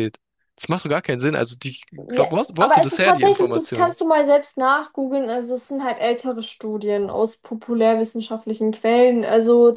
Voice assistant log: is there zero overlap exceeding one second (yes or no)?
no